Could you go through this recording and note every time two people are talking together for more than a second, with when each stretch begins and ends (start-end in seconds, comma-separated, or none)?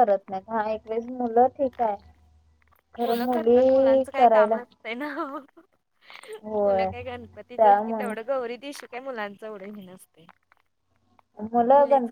3.0-4.6